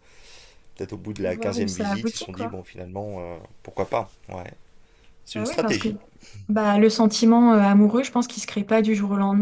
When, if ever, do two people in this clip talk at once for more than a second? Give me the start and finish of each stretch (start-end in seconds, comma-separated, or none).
1.2-2.5